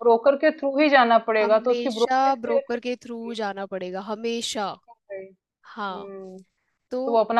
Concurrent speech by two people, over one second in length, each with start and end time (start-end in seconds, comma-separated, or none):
1.4-3.4